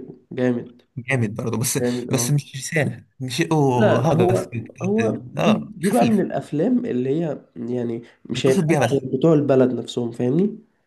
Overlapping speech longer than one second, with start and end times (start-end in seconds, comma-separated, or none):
3.7-6.2